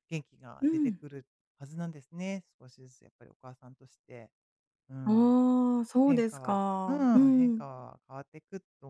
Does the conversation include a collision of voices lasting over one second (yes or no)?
yes